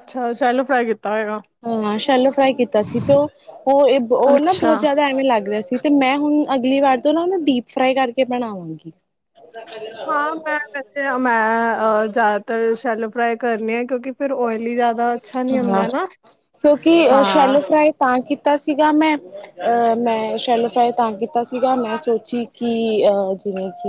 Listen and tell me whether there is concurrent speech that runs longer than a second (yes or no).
no